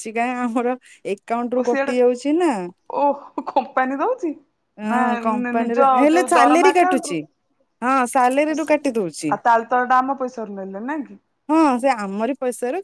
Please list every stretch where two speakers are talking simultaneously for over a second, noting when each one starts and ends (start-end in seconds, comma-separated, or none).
5.6-7.2